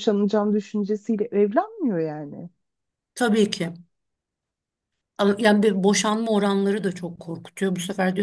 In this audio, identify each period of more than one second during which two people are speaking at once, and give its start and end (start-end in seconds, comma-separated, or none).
none